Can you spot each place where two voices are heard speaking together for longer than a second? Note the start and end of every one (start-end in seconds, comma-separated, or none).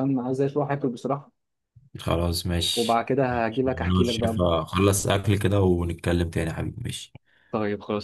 2.8-4.4